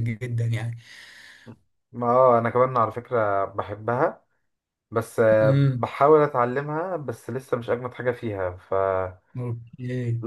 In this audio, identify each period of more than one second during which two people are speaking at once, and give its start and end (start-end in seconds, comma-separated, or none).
none